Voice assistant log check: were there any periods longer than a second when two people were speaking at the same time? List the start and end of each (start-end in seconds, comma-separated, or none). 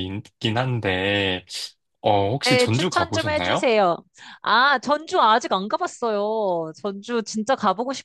2.4-3.7